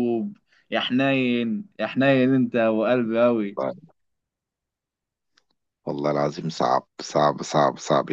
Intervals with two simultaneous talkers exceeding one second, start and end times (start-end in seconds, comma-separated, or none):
none